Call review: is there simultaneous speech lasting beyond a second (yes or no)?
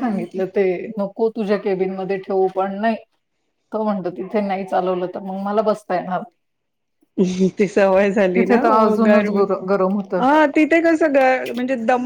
no